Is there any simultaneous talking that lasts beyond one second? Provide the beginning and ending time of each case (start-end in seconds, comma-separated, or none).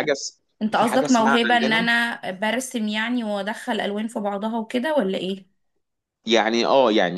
0.6-1.9